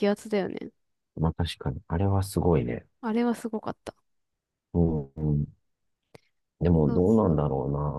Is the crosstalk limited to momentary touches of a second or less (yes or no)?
yes